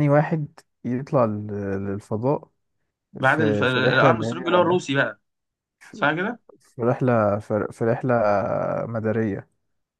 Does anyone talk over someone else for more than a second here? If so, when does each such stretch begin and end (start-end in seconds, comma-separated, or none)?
3.2-4.8